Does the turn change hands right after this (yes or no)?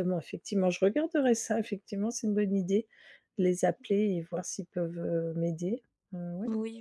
yes